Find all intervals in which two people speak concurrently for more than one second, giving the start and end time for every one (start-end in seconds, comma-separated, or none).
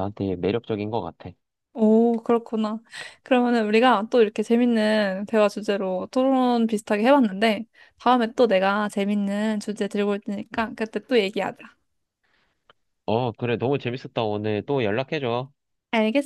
none